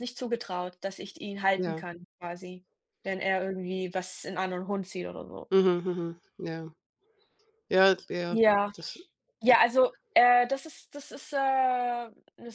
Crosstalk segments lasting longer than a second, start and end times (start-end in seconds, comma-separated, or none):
none